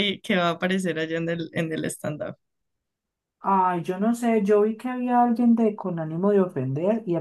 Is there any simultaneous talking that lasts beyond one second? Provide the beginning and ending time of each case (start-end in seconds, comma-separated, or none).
none